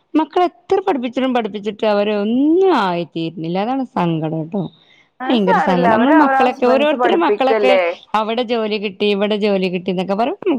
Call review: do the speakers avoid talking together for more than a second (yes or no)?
no